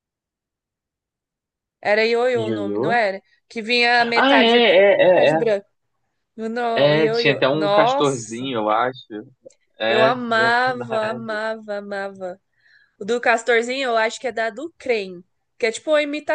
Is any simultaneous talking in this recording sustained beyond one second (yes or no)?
yes